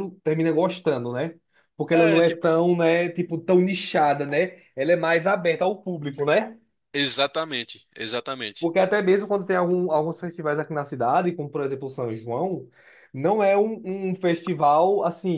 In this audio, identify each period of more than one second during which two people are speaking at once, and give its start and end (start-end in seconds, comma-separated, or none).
none